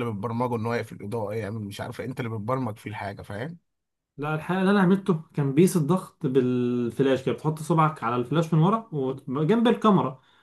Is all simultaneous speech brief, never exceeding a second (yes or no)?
yes